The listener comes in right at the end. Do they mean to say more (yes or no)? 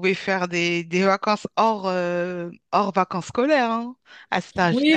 yes